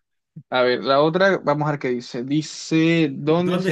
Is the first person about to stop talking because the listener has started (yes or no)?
yes